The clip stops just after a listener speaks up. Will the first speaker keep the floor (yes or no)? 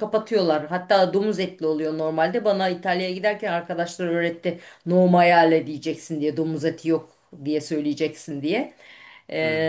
yes